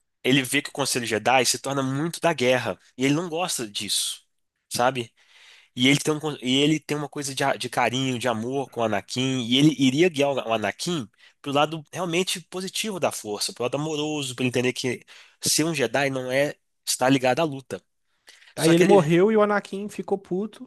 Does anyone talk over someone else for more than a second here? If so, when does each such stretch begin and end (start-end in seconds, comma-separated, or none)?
none